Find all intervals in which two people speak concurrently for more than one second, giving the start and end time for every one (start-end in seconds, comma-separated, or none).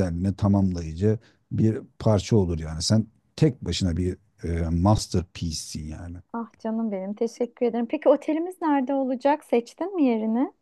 none